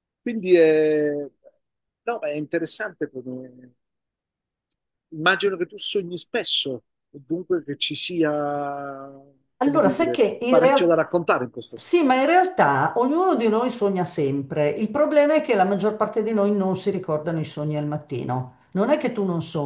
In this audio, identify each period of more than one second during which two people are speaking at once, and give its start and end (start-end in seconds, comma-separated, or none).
9.6-11.0